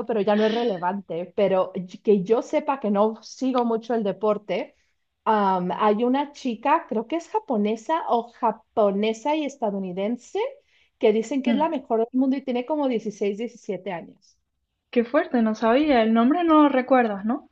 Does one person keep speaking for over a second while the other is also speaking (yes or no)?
no